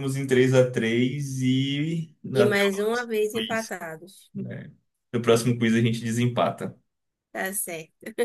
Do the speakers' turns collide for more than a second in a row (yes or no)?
yes